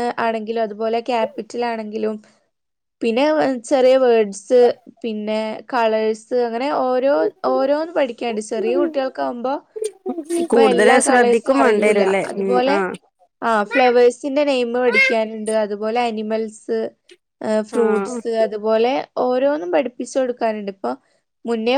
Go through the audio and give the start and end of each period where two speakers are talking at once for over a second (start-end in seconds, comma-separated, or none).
10.5-12.8